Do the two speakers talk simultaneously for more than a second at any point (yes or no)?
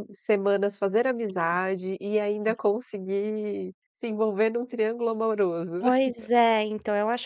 no